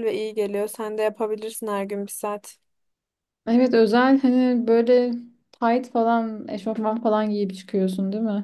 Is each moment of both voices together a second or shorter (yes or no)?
yes